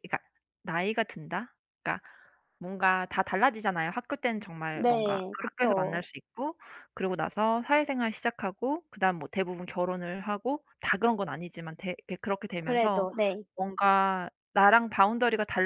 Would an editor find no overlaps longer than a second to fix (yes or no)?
no